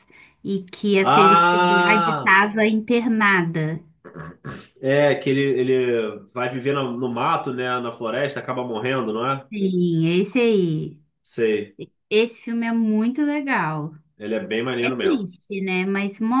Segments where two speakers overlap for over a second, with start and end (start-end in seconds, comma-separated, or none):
1.0-2.3